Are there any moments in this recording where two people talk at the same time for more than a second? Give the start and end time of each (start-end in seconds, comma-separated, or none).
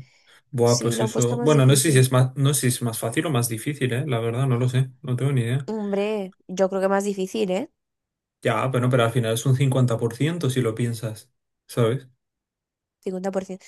0.6-2.1